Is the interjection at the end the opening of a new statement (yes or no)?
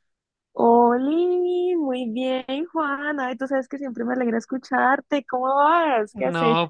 yes